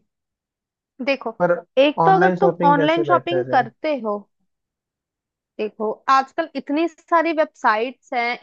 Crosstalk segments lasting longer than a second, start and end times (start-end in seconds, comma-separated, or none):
2.0-3.6